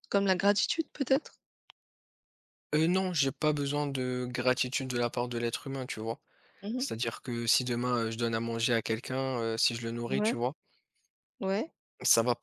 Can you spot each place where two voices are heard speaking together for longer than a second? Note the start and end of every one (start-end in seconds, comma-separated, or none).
none